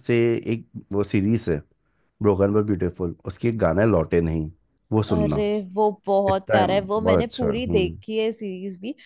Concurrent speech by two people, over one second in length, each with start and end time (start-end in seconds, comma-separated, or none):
6.3-8.0